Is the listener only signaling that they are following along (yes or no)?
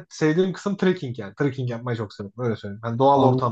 no